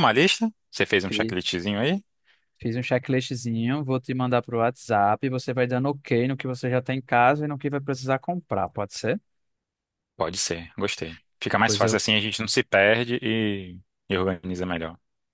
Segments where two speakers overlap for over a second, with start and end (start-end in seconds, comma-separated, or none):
none